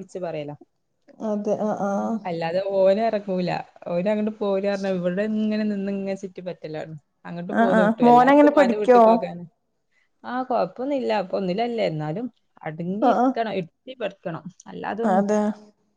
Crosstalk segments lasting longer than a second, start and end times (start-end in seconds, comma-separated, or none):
7.6-9.0